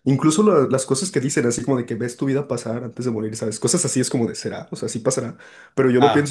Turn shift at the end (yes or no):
no